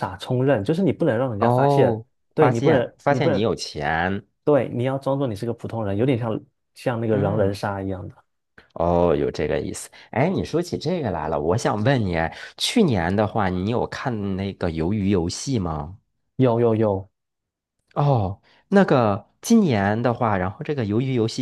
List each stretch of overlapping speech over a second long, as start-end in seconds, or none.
1.4-3.5